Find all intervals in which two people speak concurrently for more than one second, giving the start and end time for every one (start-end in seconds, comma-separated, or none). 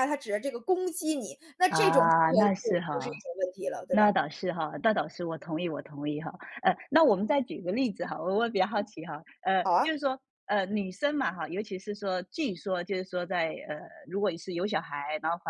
1.7-3.2